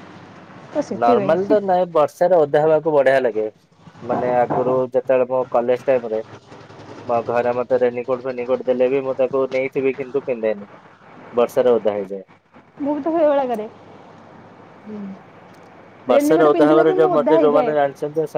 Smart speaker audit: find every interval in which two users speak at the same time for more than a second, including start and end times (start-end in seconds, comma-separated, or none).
16.1-17.7